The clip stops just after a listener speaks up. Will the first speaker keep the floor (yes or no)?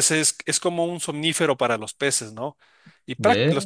yes